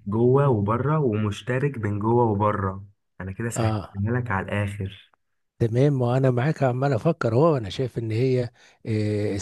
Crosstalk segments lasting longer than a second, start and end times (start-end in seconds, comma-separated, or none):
none